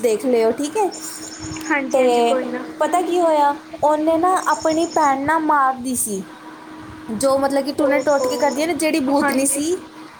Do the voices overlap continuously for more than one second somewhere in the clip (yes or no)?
yes